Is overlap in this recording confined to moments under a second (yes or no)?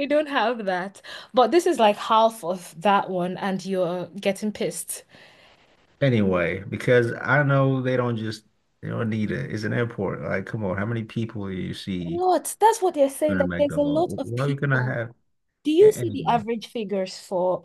no